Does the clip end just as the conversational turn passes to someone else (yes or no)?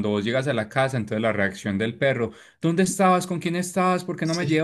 no